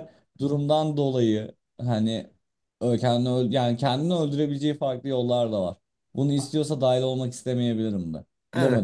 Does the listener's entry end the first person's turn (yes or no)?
yes